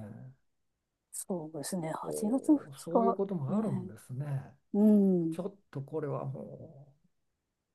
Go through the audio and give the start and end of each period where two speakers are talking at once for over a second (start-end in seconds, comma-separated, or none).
2.0-3.6